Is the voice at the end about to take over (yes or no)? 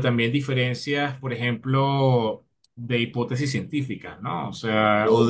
no